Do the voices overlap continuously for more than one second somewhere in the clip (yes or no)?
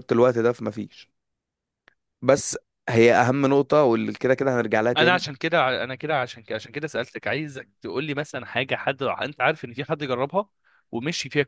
no